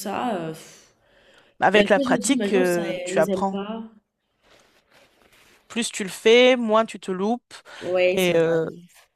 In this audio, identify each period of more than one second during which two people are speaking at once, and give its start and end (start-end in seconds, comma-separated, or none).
1.7-3.6